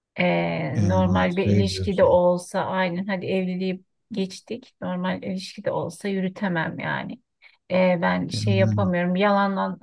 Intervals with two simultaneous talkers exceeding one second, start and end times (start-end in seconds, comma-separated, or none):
0.8-2.2